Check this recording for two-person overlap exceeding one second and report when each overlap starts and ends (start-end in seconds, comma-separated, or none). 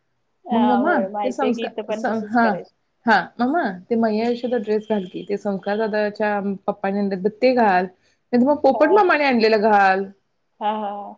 0.5-2.5